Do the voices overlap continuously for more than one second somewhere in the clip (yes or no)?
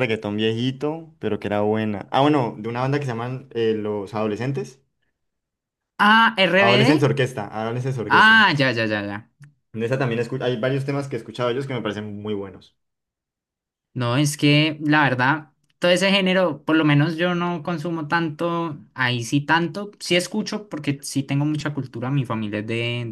no